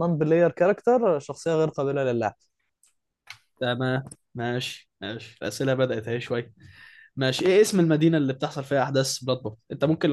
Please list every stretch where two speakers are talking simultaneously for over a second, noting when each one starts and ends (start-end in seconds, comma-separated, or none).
none